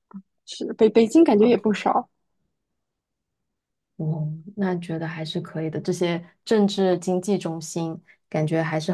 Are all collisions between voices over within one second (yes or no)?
yes